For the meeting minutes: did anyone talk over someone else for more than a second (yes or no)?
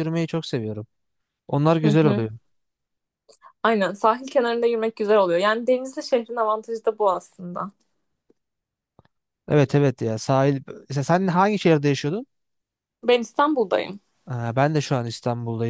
no